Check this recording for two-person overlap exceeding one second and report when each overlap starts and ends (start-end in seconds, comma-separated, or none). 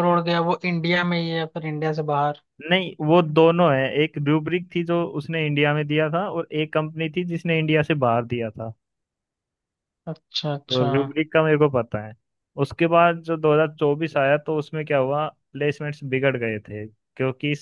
none